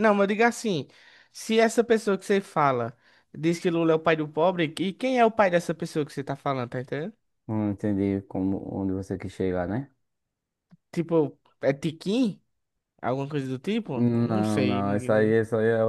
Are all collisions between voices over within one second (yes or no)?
no